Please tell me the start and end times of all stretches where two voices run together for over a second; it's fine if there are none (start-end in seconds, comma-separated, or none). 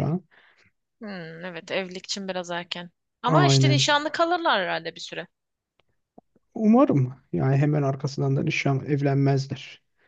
none